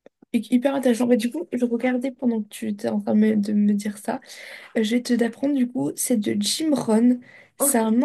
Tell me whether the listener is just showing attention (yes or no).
yes